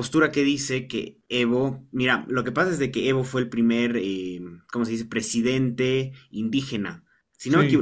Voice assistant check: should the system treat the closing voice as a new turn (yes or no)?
no